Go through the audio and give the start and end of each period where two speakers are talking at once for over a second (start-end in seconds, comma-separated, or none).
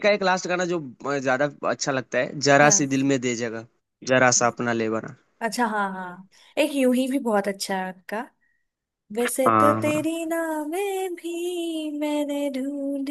none